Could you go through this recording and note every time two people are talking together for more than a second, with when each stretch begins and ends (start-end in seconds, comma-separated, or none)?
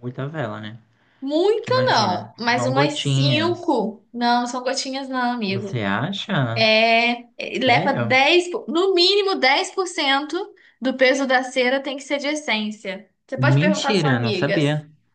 1.5-3.8, 13.4-14.6